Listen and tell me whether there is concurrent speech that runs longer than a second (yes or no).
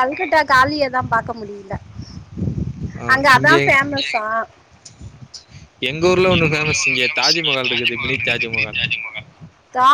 yes